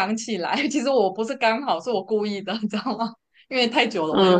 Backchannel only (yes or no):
no